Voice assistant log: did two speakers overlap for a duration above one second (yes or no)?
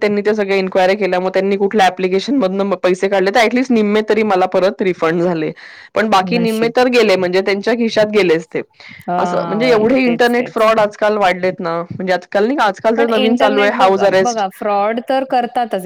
yes